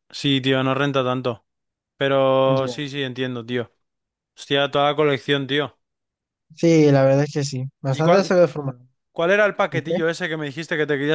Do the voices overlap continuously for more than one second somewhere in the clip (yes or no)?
no